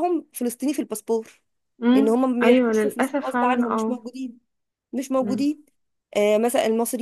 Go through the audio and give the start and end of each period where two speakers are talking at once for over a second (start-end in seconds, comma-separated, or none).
1.9-4.0